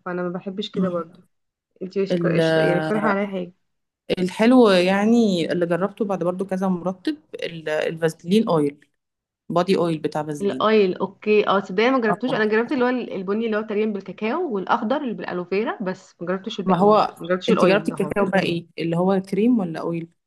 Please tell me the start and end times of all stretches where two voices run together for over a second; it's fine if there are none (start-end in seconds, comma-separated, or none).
16.7-18.1